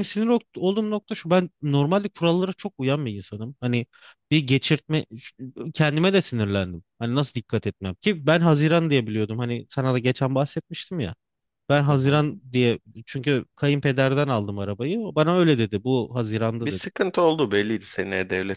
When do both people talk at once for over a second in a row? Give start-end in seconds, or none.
none